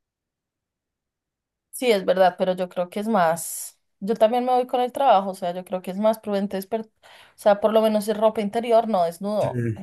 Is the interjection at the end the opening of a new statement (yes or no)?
no